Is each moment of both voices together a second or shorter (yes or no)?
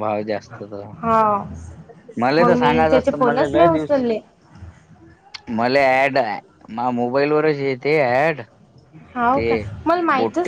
no